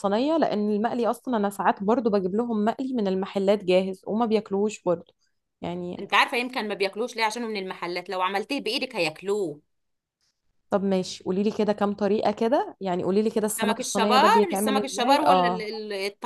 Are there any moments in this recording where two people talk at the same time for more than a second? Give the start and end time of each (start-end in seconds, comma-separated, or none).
13.4-15.7